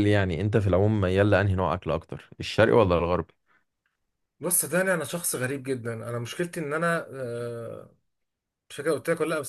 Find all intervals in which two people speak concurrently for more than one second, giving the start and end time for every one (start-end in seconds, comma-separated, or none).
none